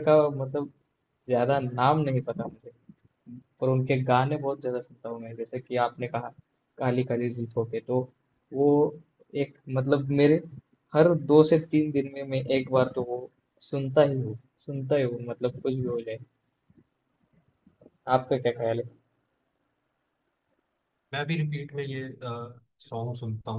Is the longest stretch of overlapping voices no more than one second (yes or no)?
yes